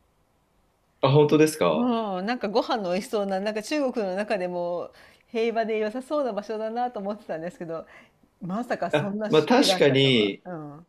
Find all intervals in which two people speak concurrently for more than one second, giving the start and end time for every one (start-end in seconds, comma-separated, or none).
8.9-10.3